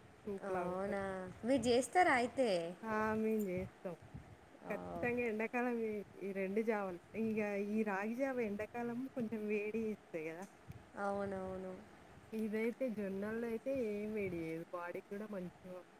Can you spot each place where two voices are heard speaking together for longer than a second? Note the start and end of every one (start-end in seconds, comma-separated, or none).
none